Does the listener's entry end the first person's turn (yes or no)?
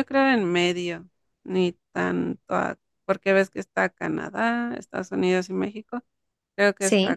no